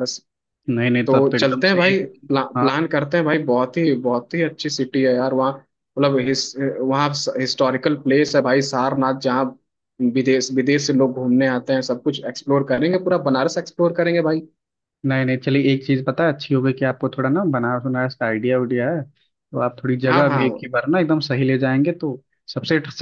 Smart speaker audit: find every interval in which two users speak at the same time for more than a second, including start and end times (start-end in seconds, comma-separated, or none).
1.1-2.7